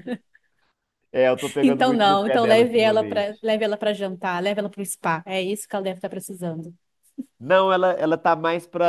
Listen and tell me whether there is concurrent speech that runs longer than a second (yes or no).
yes